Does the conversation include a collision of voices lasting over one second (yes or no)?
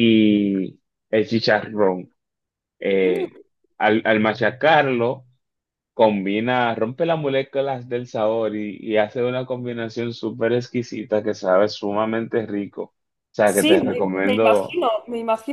yes